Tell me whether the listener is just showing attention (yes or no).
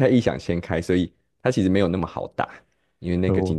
yes